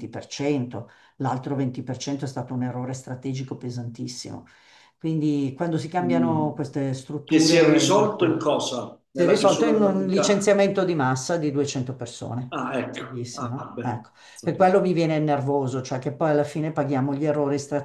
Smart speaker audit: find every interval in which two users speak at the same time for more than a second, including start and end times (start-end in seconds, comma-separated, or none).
7.2-8.5, 9.1-10.5, 12.5-14.8